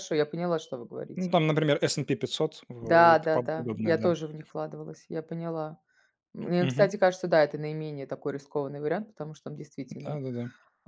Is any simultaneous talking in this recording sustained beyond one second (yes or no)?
yes